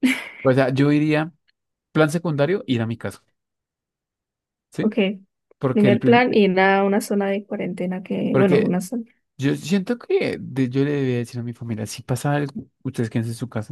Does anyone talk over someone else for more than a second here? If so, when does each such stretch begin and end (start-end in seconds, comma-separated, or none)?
none